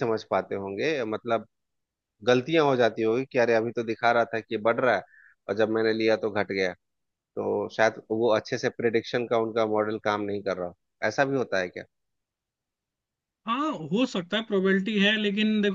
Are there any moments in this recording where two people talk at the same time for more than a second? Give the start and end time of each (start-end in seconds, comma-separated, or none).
none